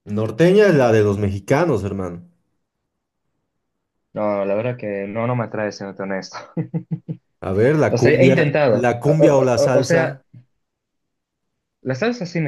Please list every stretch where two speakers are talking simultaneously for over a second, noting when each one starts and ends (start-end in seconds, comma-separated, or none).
7.9-10.2